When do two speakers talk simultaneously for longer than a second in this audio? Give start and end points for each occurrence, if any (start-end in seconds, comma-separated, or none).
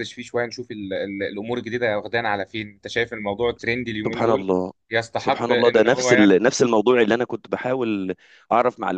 5.2-6.4